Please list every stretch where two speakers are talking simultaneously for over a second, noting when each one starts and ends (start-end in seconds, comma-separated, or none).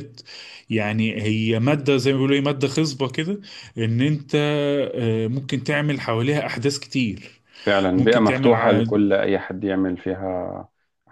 none